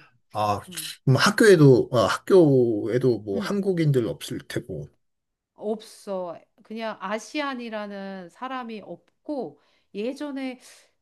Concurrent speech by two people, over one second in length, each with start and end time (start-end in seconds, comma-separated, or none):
none